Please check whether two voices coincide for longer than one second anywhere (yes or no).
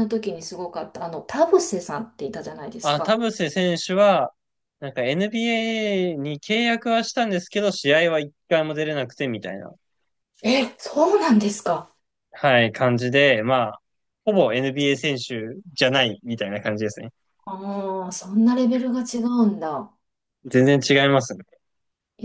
no